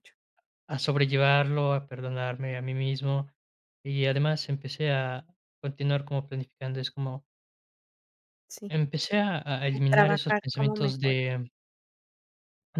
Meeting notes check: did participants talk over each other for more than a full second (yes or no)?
yes